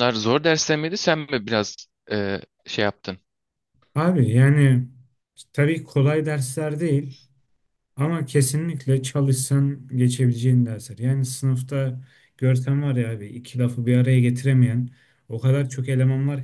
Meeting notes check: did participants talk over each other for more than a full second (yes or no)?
no